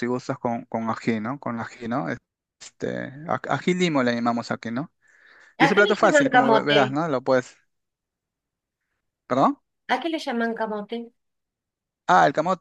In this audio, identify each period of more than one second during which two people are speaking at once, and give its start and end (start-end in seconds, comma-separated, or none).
5.6-7.0